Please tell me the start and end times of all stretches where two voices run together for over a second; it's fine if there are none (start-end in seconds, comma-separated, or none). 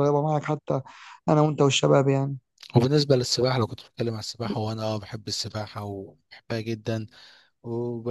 none